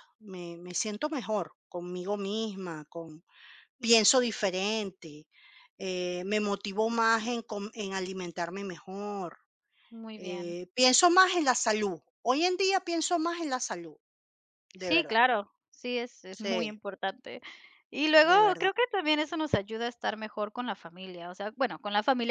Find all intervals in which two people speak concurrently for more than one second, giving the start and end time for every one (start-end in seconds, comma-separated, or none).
none